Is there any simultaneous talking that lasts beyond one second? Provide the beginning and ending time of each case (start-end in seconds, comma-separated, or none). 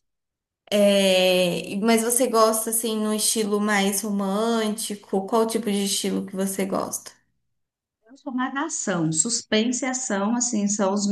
none